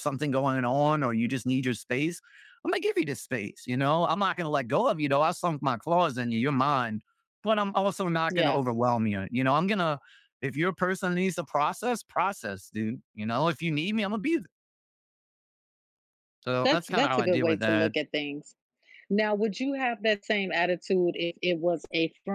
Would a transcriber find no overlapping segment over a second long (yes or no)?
no